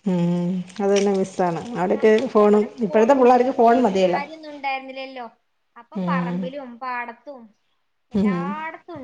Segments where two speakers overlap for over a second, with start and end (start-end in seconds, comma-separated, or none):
2.0-4.2